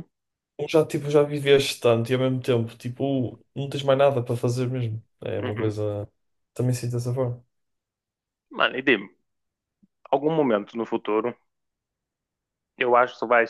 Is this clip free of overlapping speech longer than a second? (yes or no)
yes